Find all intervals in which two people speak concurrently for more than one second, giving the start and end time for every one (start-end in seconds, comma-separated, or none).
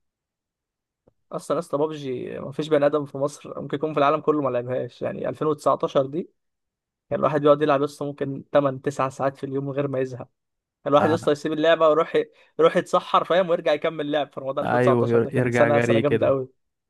14.6-16.3